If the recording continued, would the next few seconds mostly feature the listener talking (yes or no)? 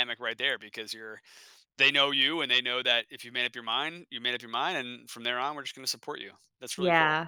yes